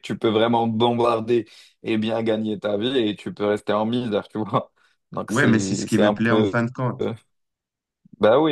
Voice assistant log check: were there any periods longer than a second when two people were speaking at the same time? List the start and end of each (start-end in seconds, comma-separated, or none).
5.3-6.6